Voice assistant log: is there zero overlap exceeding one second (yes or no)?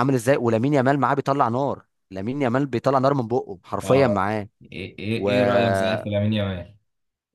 yes